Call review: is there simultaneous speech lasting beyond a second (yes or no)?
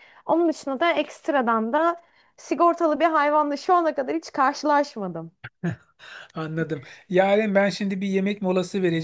no